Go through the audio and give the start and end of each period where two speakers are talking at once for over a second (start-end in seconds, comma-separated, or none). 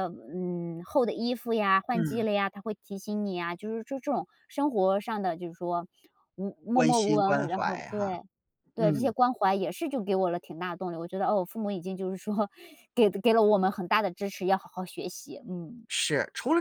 6.8-8.1